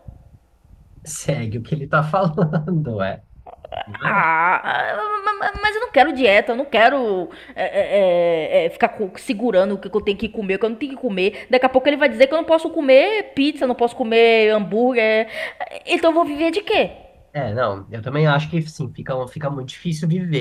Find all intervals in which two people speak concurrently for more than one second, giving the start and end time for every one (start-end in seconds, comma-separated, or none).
none